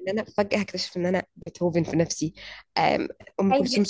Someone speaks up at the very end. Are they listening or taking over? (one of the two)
listening